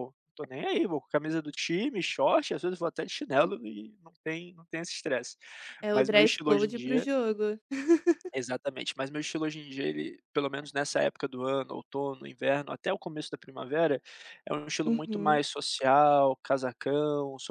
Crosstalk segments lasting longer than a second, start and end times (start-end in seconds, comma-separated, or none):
5.9-7.1